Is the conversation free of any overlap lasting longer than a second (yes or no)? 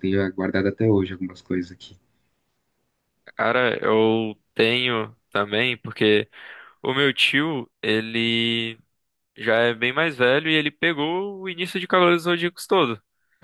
yes